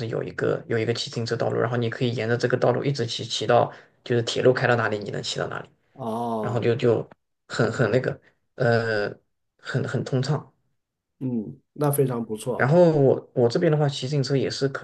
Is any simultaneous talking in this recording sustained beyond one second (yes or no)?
no